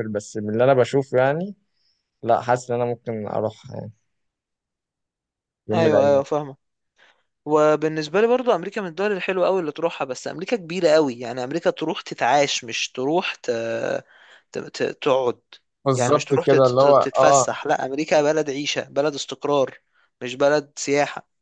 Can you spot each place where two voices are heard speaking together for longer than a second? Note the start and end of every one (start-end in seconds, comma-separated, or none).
16.0-17.5